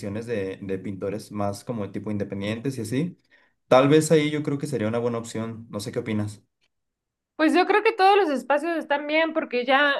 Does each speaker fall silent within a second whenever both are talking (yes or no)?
yes